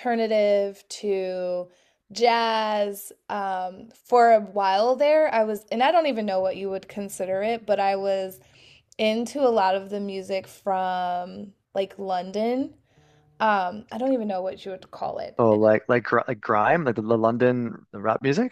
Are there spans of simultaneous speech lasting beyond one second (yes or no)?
no